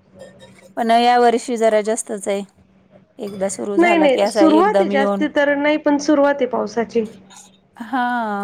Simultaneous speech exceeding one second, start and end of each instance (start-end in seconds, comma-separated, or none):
3.8-5.2